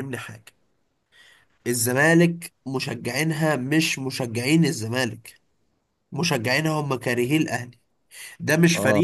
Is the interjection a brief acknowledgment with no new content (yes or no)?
yes